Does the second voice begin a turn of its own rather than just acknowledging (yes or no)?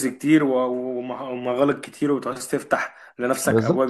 yes